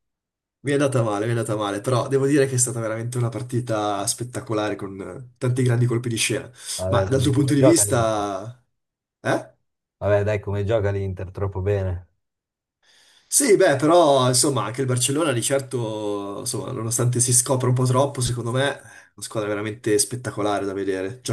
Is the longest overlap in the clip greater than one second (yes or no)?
yes